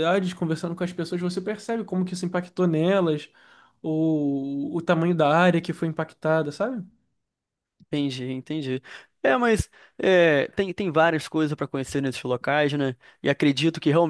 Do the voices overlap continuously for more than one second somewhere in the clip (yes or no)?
no